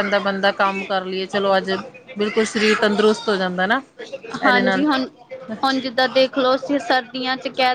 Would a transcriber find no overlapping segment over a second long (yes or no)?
yes